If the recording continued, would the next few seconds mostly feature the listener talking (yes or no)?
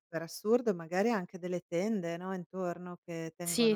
no